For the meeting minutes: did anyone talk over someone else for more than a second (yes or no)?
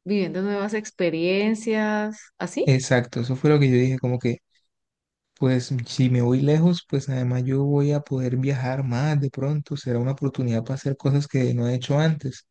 no